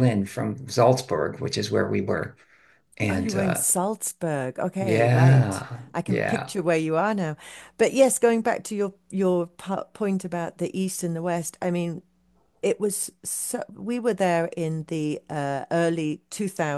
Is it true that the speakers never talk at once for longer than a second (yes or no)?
no